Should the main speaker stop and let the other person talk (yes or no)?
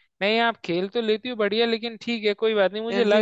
no